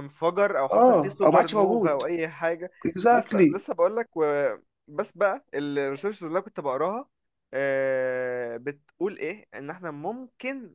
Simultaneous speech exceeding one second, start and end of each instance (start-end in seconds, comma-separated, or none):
0.7-2.0